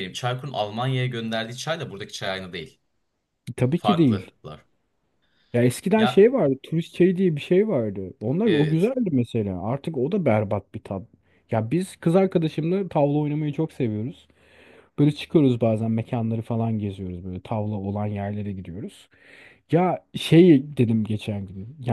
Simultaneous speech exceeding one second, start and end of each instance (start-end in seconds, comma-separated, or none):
none